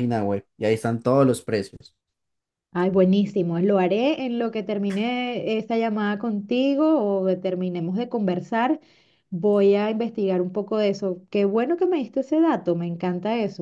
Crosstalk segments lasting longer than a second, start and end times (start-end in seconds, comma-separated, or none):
none